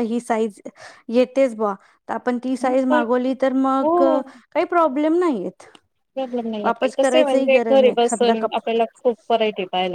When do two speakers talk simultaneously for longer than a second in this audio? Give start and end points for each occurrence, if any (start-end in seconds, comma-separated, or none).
6.6-8.5